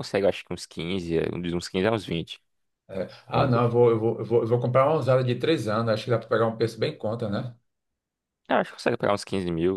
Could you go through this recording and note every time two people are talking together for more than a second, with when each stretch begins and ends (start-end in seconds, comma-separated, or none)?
none